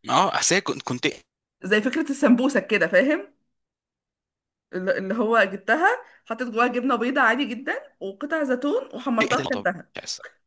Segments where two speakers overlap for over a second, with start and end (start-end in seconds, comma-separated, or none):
none